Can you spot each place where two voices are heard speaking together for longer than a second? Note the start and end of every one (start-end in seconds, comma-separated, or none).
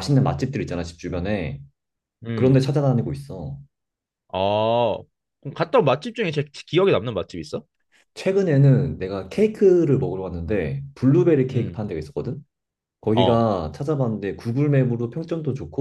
none